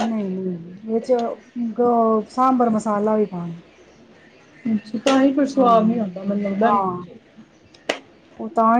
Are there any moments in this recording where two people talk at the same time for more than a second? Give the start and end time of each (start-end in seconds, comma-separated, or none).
none